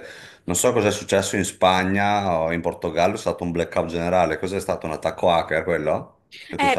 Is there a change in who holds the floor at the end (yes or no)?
yes